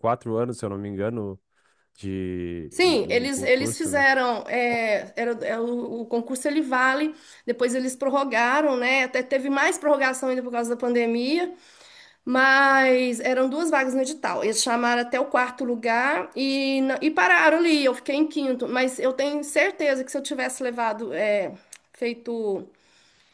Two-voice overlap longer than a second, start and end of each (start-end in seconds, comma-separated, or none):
2.7-4.0